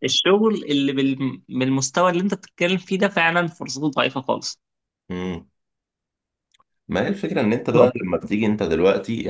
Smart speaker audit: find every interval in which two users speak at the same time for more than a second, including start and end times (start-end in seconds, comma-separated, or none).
none